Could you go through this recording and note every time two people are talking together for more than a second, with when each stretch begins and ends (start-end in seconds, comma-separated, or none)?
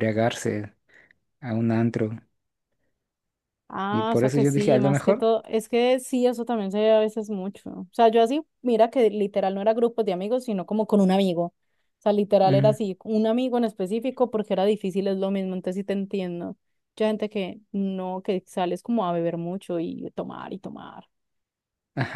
3.9-5.3